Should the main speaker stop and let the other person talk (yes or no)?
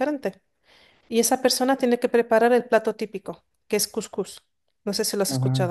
yes